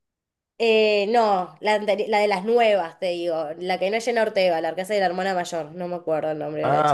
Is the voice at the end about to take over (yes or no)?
yes